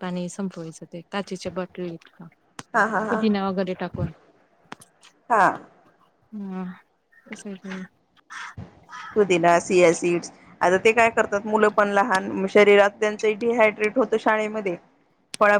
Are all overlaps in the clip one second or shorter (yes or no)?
yes